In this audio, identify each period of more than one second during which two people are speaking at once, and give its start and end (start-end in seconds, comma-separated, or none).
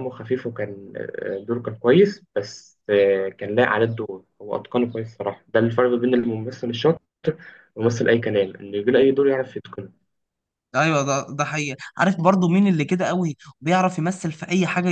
none